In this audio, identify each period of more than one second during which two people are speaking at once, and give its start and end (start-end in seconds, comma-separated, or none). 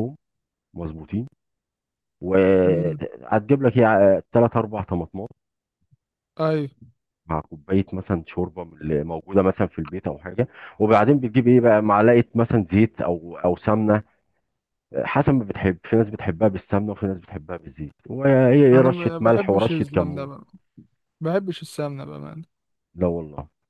18.7-20.3